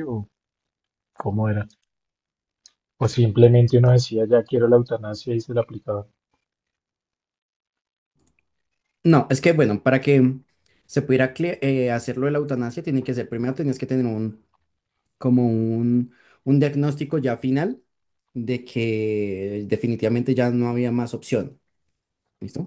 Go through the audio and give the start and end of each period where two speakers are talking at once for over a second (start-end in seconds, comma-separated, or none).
none